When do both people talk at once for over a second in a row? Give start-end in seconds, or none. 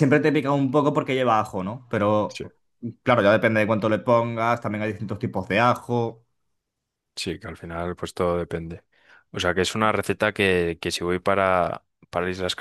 none